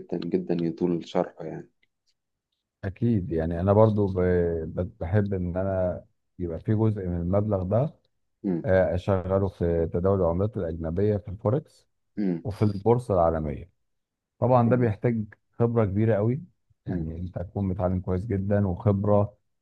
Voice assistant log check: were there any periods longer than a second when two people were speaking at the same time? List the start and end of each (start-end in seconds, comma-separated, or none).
none